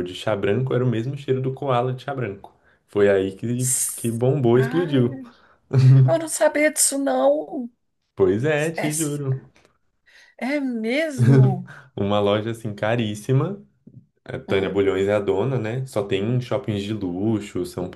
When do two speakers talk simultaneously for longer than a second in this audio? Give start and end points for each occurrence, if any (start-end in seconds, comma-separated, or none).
3.6-5.2